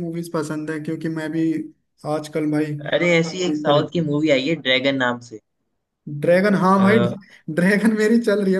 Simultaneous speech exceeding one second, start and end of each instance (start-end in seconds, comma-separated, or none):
none